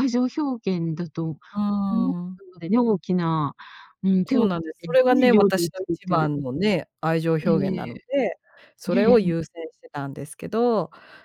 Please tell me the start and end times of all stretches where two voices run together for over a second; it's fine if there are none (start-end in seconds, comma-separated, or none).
4.2-6.3